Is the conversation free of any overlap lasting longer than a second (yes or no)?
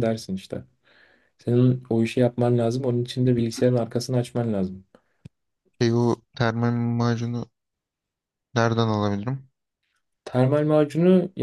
yes